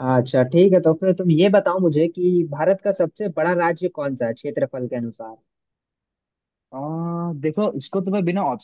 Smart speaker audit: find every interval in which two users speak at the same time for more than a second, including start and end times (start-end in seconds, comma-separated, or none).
none